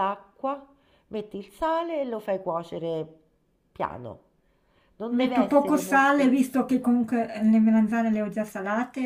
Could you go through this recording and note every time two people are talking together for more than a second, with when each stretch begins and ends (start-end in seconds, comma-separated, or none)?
5.1-6.4